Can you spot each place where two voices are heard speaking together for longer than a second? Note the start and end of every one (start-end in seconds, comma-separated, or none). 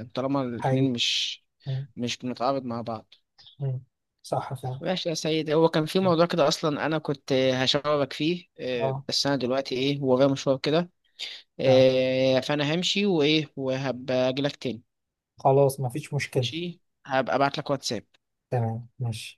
none